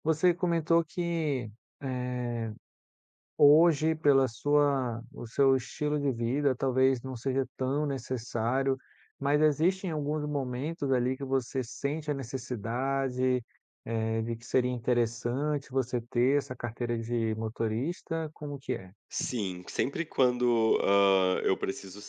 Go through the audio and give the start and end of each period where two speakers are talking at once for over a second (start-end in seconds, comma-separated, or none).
none